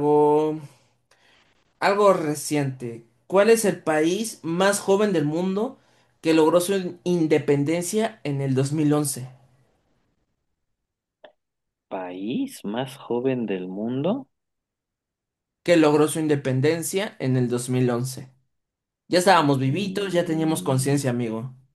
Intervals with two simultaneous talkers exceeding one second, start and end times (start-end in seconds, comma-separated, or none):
19.7-21.0